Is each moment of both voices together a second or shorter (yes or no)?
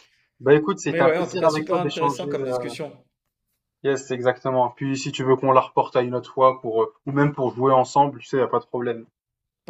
no